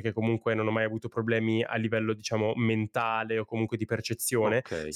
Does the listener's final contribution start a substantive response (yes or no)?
no